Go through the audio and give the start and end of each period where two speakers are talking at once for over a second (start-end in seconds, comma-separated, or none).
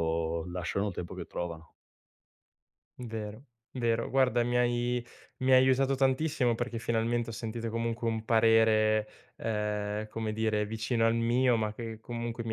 none